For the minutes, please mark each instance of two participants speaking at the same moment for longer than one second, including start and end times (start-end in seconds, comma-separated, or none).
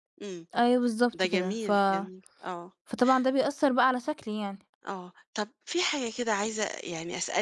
none